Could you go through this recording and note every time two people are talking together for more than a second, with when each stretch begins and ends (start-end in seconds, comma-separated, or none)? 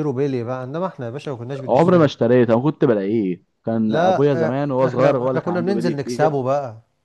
3.9-6.3